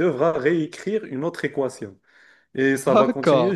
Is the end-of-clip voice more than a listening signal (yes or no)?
no